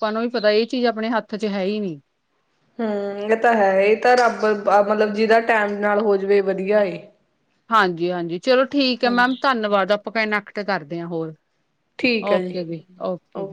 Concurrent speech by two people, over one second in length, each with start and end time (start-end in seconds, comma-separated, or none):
none